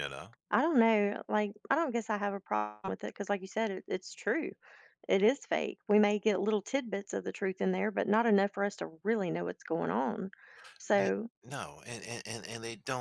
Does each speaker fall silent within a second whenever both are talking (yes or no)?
yes